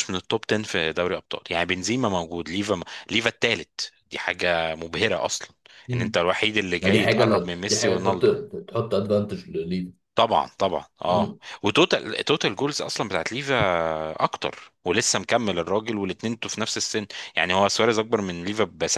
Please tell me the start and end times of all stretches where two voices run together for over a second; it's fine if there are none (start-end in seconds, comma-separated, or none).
6.8-8.2